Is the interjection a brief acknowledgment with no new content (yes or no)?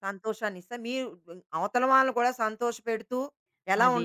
yes